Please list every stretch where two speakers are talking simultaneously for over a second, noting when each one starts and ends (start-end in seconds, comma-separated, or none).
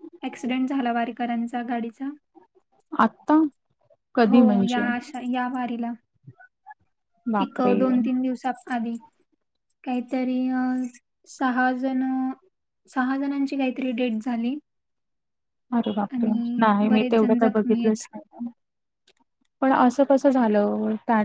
16.1-18.0